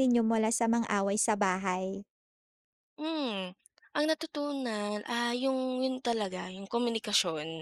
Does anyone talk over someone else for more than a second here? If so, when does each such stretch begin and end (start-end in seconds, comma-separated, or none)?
none